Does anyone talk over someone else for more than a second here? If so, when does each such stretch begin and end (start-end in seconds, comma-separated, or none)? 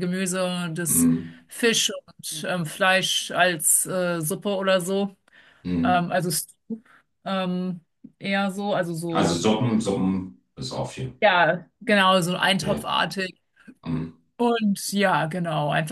none